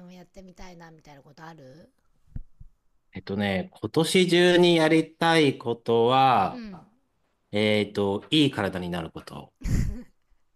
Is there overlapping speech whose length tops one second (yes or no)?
no